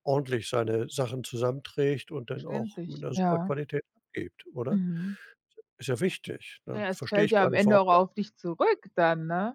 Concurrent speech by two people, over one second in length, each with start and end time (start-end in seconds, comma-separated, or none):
2.3-3.5, 6.8-8.0